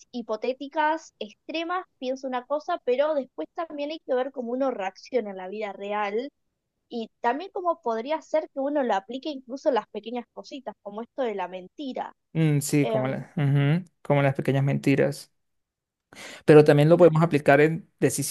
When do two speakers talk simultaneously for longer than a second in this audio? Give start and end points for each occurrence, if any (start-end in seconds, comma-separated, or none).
none